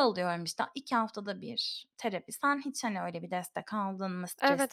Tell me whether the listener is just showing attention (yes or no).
no